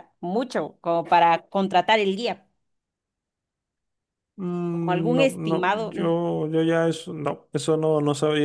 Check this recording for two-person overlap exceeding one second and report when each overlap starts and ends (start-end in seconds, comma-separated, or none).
4.7-5.9